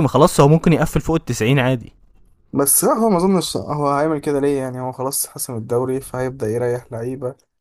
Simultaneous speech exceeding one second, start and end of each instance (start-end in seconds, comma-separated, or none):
none